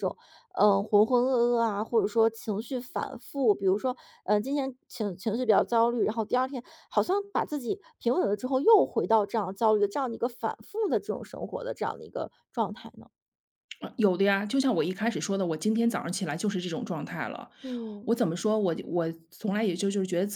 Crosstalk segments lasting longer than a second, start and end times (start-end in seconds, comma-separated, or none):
none